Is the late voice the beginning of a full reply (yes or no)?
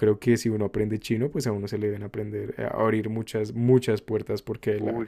no